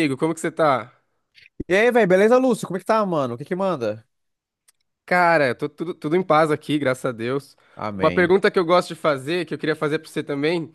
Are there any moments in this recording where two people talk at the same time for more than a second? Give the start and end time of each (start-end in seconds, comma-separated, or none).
none